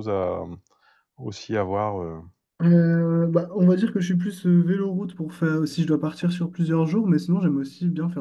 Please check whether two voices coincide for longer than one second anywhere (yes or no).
no